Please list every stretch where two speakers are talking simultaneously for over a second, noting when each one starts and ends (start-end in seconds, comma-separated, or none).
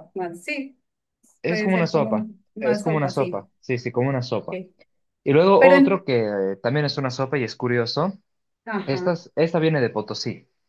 1.5-3.5